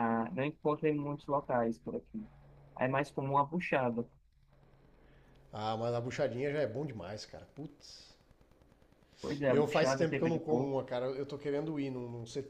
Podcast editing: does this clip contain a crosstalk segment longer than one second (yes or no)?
yes